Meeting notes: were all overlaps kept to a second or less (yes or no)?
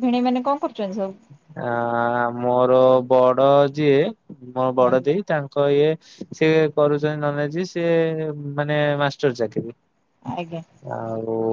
yes